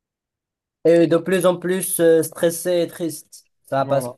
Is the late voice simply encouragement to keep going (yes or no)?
yes